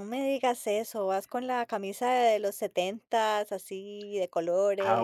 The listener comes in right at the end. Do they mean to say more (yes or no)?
yes